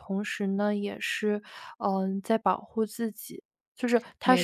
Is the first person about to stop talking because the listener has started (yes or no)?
yes